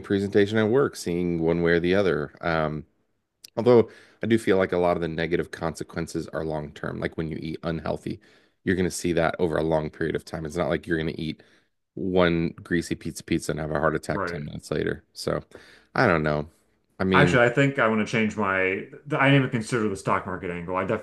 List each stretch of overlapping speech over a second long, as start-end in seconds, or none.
none